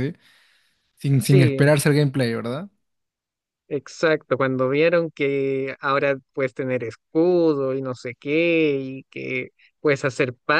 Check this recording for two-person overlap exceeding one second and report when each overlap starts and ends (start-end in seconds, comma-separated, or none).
none